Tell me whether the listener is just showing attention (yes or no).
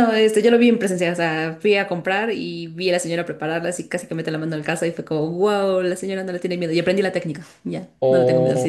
no